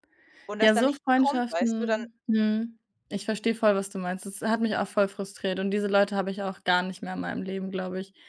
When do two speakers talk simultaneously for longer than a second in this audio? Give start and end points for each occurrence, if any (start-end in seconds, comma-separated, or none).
0.6-2.0